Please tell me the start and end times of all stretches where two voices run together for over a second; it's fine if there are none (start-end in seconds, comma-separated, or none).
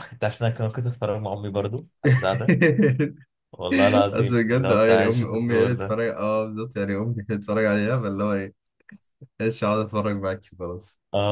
4.1-6.0